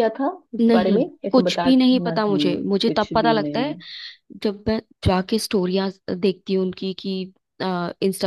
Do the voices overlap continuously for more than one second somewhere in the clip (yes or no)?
yes